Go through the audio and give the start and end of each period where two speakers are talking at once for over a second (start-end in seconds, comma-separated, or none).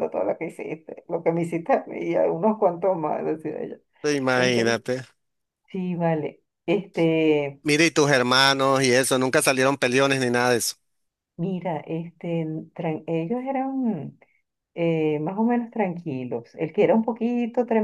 none